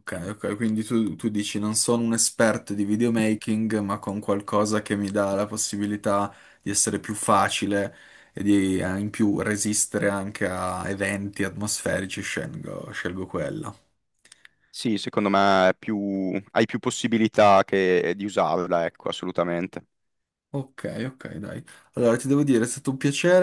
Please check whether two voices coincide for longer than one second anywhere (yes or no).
no